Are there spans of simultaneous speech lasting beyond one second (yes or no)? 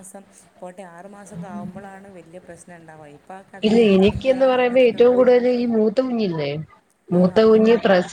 no